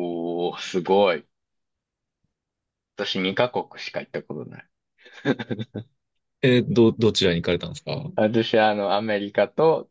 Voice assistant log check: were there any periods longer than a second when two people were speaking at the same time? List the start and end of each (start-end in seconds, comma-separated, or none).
none